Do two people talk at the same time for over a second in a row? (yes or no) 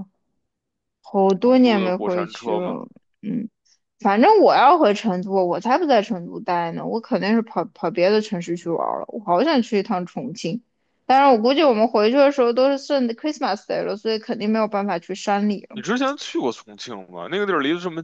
yes